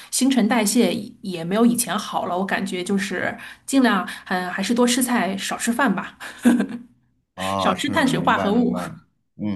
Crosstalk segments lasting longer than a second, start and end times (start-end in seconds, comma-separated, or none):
7.6-8.8